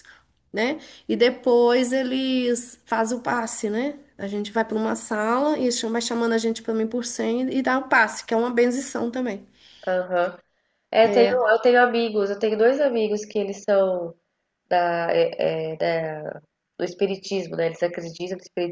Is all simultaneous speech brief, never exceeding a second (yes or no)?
yes